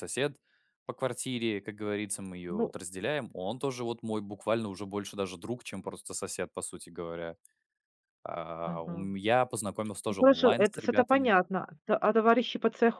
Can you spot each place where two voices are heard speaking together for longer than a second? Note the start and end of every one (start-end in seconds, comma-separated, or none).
10.1-11.3